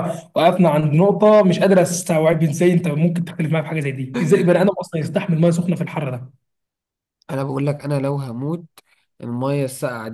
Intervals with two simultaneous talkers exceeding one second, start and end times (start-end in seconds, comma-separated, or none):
none